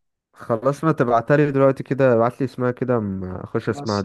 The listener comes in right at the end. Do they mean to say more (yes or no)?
yes